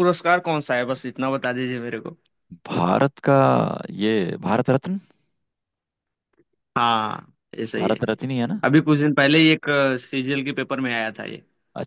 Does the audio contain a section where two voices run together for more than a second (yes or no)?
no